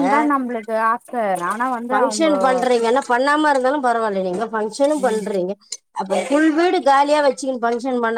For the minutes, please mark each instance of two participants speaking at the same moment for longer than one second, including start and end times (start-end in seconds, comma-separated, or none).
none